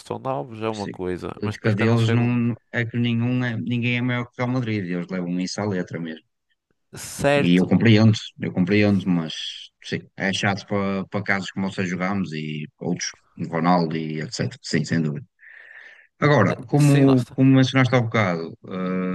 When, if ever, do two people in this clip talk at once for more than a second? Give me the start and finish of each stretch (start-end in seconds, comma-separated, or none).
0.8-2.3